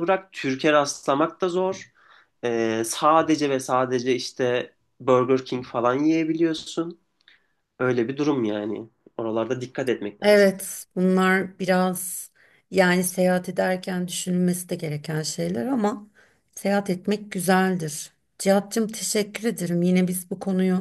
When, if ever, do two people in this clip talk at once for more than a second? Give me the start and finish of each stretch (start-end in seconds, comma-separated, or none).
none